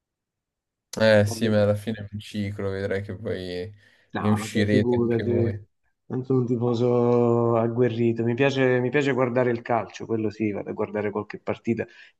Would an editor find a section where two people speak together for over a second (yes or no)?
yes